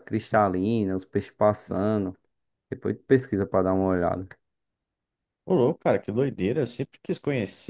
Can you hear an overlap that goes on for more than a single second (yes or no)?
no